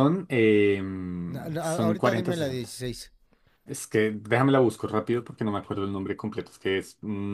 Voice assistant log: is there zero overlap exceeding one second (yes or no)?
no